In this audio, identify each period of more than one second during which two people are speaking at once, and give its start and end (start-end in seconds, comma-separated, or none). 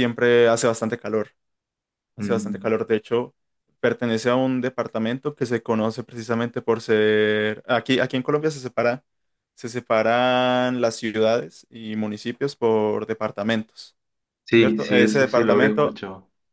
14.5-16.0